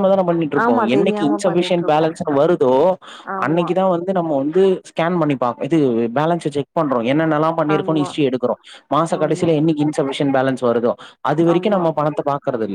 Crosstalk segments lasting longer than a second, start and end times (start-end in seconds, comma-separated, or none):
0.6-2.1